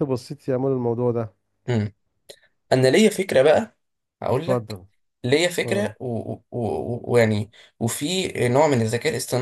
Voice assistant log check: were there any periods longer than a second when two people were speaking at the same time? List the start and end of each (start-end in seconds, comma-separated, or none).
none